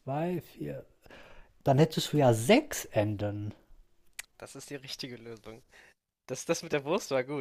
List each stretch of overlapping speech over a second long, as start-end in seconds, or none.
none